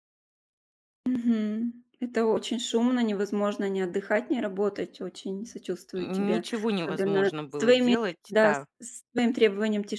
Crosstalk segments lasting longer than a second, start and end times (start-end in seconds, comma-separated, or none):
6.0-8.6